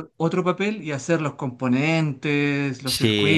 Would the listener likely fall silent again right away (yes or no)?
no